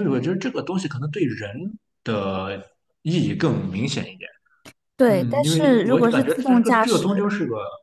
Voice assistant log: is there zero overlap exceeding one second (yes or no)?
no